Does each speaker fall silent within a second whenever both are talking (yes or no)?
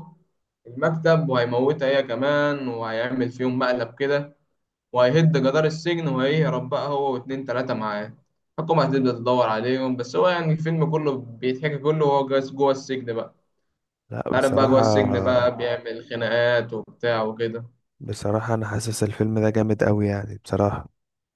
no